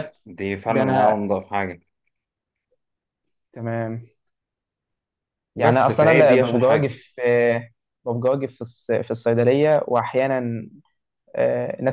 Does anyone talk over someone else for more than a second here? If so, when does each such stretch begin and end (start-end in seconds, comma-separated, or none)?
5.6-7.0